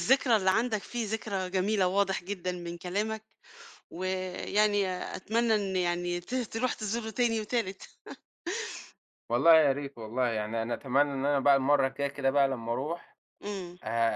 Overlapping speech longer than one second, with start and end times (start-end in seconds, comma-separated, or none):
none